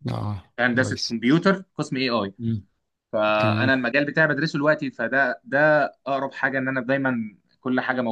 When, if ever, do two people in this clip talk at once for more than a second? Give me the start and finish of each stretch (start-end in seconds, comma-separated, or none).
none